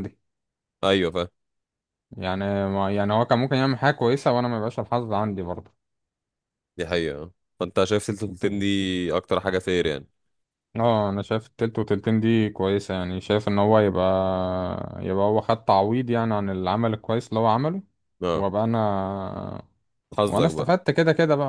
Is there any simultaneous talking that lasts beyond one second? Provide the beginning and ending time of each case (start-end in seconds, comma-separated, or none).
none